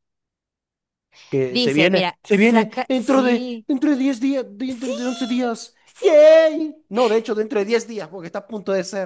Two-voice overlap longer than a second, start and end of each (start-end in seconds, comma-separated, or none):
1.5-3.6